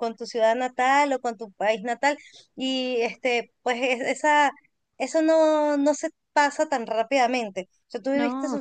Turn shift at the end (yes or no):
no